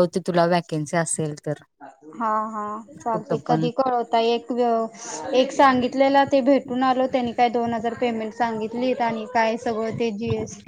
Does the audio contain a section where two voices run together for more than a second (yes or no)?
no